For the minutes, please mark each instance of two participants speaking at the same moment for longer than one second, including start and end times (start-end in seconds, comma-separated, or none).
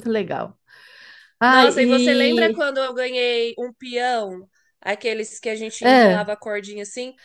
1.4-2.6